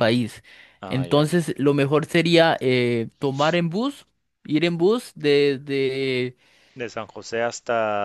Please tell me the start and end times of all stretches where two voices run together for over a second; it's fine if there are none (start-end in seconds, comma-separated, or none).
none